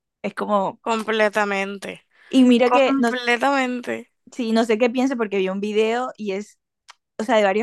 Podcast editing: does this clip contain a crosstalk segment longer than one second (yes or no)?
no